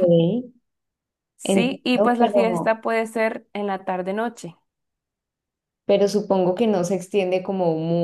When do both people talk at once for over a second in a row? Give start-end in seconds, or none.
1.4-2.8